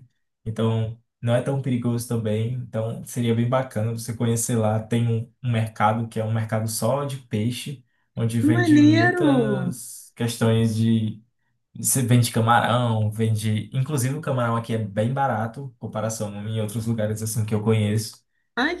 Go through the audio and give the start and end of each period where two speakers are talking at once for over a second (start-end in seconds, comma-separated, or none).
8.4-9.7